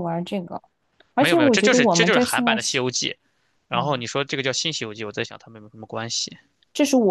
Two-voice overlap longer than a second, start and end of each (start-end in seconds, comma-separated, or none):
1.2-2.8